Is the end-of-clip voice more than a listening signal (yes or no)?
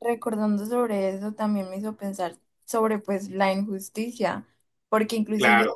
no